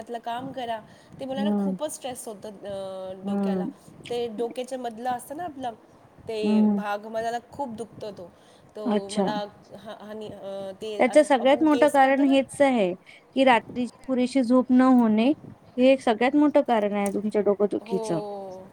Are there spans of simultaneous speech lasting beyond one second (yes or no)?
no